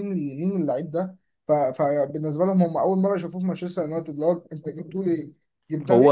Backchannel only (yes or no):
yes